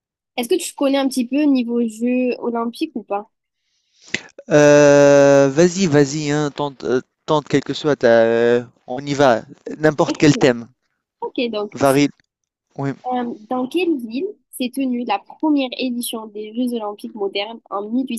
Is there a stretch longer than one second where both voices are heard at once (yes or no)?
no